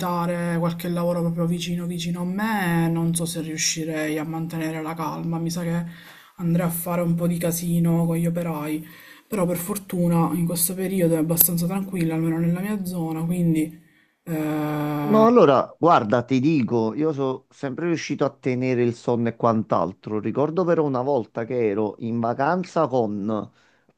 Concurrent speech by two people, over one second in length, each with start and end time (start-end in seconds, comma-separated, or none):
none